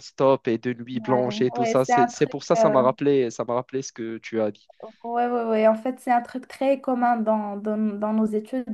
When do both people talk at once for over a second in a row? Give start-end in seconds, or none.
0.9-2.7